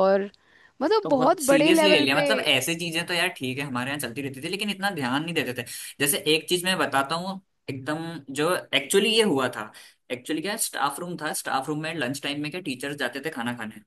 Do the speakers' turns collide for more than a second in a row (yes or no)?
yes